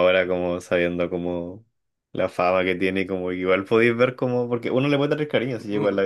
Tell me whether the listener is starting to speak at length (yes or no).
yes